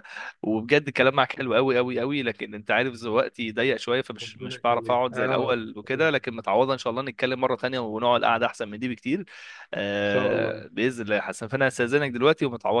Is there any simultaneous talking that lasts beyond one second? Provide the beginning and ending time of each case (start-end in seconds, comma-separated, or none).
4.2-6.1